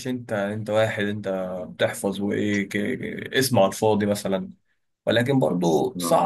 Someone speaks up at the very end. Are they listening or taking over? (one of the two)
listening